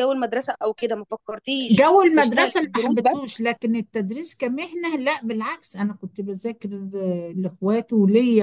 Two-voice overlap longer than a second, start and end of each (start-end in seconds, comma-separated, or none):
1.7-3.2